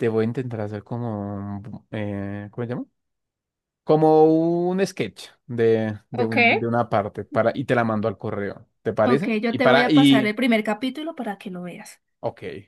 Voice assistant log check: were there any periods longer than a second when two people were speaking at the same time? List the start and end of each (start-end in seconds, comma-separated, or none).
9.1-10.3